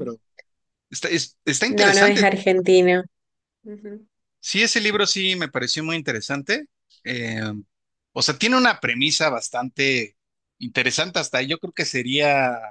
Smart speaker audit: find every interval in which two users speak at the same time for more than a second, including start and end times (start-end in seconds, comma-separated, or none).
none